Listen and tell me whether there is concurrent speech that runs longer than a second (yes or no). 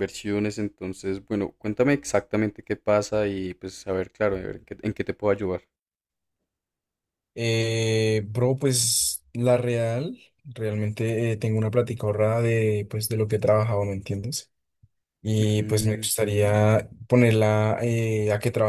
yes